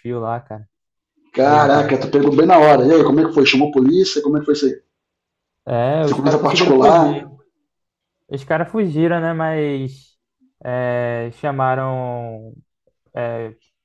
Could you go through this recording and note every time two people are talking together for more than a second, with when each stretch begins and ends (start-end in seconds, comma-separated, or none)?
6.1-7.3